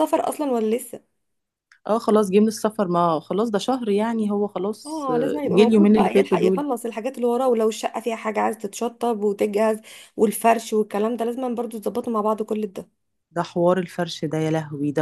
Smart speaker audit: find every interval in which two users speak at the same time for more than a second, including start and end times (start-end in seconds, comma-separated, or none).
4.8-6.6